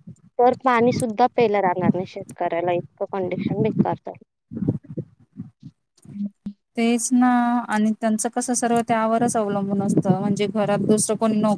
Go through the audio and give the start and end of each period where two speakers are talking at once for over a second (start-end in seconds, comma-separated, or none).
none